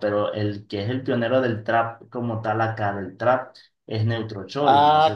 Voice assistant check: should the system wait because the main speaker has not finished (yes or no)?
no